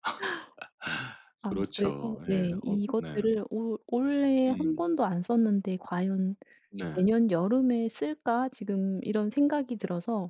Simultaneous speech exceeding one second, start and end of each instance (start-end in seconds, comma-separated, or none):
1.5-3.3